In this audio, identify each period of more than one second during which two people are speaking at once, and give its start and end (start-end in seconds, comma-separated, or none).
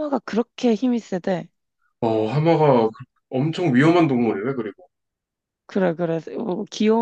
none